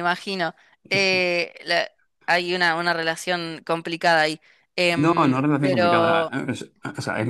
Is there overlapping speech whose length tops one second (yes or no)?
yes